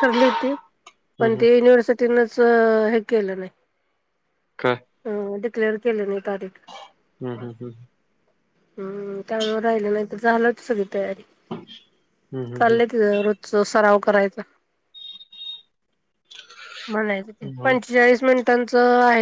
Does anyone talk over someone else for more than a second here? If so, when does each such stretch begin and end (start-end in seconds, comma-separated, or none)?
none